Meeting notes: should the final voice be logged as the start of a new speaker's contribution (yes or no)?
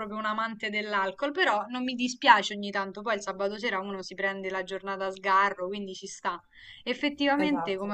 no